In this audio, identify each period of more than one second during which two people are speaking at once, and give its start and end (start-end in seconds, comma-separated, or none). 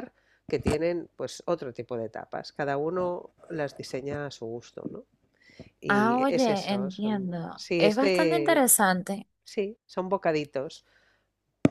5.9-8.6